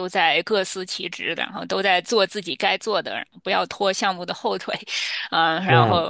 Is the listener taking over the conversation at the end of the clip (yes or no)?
no